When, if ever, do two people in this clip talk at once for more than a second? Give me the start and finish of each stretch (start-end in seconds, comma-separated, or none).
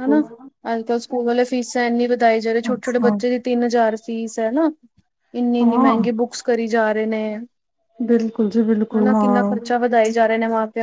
none